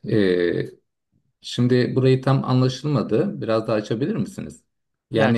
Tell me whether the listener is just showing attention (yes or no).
no